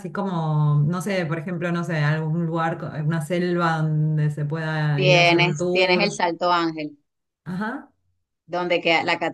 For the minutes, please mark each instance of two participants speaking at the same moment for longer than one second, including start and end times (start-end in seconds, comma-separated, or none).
5.0-6.2